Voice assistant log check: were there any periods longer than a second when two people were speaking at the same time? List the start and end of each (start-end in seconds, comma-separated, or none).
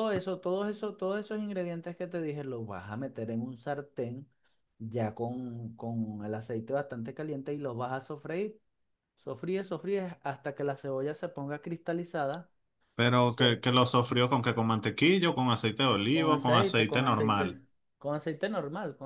16.1-17.4